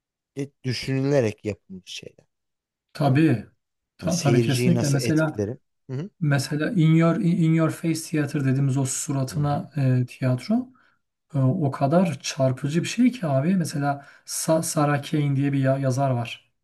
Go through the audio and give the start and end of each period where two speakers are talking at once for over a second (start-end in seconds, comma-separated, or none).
4.0-5.4